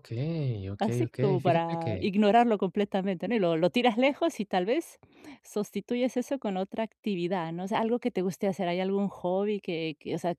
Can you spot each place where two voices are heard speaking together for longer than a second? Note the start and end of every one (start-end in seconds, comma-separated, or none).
0.8-2.1